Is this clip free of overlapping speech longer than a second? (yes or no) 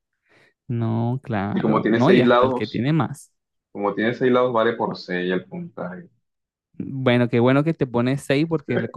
no